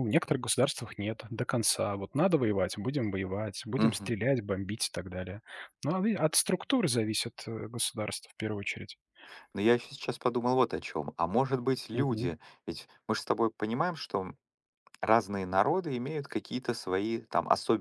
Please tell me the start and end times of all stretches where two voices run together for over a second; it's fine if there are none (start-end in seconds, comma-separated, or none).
none